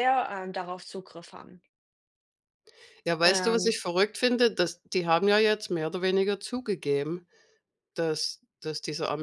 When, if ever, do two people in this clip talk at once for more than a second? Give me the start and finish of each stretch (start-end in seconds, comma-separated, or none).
none